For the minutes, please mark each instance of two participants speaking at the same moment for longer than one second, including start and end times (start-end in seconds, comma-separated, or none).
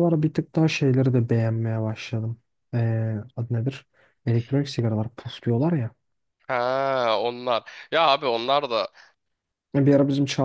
none